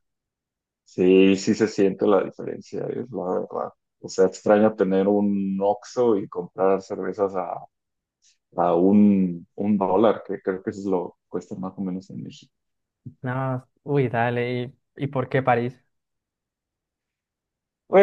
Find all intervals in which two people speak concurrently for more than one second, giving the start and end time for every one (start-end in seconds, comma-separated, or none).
none